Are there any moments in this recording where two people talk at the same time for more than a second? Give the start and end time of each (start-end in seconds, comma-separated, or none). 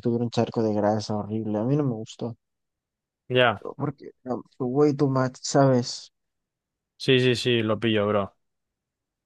none